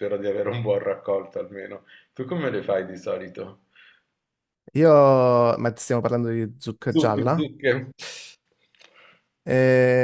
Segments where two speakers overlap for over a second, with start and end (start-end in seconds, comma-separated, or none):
none